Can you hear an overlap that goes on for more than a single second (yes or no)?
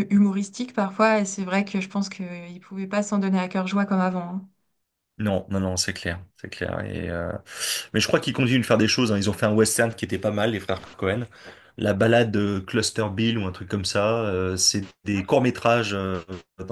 no